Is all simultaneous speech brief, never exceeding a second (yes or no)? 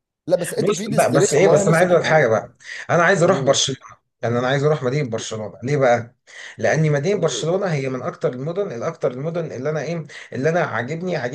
no